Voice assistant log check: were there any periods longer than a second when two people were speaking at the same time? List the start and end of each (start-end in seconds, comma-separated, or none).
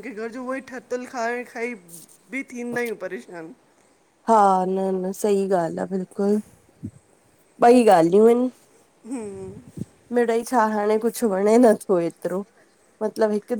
none